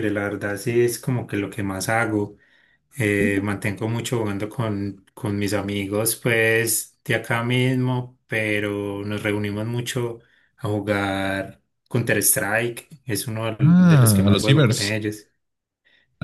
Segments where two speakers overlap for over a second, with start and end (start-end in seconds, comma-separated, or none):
13.6-15.0